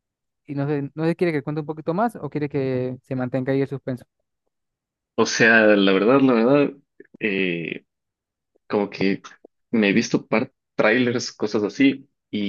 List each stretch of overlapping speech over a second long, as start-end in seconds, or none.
none